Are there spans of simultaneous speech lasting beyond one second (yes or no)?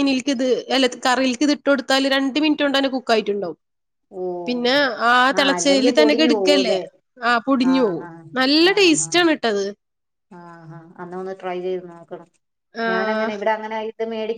yes